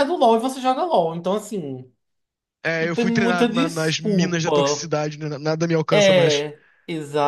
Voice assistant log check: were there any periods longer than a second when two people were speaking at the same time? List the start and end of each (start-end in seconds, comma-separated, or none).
2.8-4.9